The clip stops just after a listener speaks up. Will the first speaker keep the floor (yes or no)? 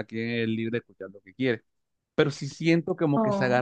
yes